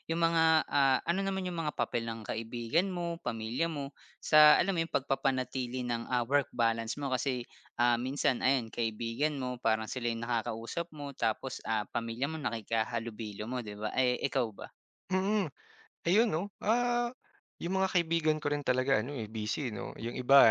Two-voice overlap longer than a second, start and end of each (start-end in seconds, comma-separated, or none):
none